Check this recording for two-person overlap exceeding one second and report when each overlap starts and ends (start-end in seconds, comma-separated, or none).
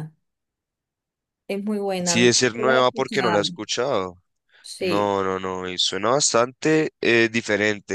2.0-3.4